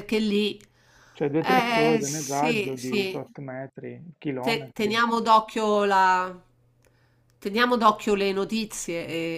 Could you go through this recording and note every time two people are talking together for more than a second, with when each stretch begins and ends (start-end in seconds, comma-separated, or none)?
1.4-3.2